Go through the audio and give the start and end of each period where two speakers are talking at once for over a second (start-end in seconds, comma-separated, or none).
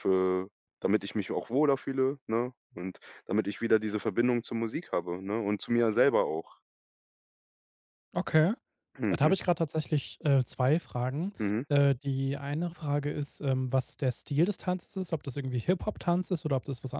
none